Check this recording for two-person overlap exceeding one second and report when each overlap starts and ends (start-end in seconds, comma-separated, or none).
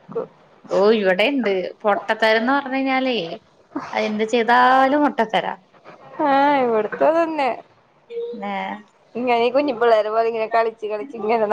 none